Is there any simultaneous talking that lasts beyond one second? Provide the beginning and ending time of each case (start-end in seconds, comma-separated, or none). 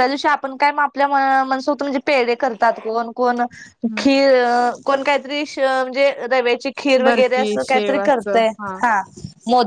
7.0-8.4